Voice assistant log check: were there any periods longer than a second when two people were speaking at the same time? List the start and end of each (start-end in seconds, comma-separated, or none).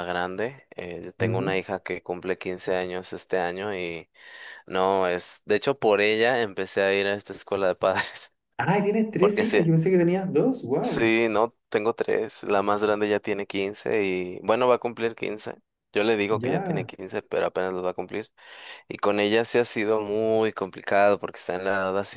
none